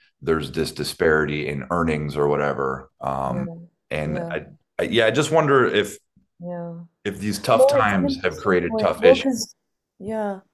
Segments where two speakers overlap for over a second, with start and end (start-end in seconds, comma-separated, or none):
7.5-9.3